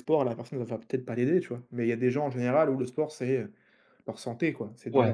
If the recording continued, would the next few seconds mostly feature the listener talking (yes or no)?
yes